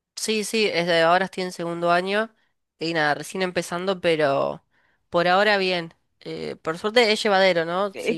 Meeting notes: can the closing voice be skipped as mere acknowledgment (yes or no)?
yes